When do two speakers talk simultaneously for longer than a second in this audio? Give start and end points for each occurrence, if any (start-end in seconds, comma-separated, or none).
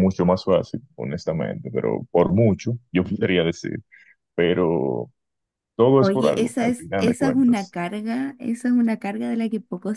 6.0-7.8